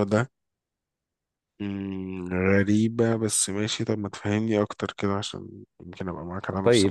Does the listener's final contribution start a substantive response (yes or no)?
yes